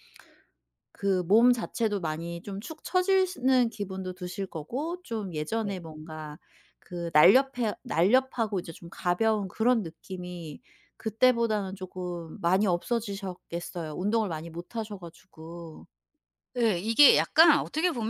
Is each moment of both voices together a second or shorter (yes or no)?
yes